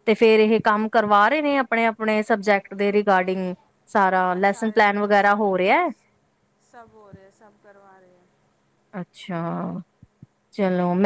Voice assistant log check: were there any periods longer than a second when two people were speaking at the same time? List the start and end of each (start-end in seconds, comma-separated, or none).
4.1-5.4